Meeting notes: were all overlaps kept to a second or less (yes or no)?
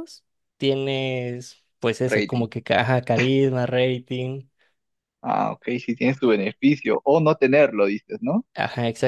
yes